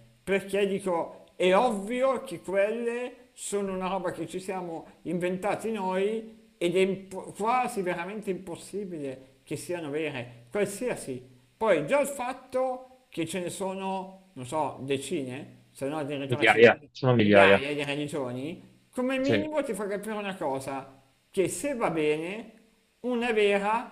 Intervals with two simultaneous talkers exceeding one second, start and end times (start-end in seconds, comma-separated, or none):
16.3-17.6